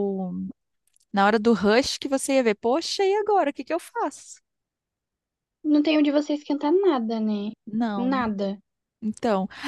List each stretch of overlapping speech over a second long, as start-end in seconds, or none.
none